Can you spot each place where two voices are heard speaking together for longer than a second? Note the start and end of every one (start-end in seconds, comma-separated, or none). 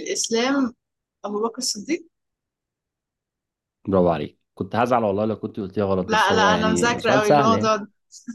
6.1-7.7